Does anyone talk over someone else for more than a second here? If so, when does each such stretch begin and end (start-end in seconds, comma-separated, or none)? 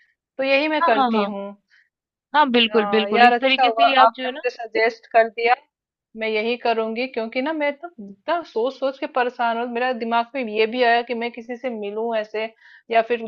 2.7-4.4